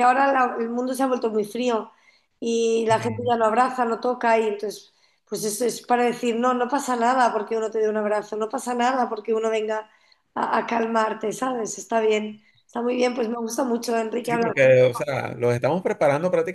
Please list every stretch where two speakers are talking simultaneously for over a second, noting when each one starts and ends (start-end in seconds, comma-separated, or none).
none